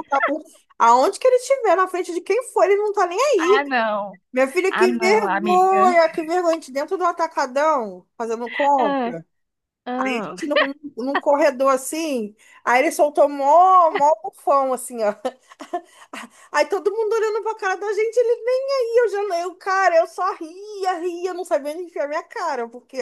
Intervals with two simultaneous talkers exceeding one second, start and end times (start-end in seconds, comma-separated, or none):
4.7-5.9